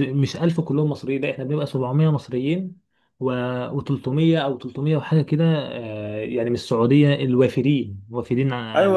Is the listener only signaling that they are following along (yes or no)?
no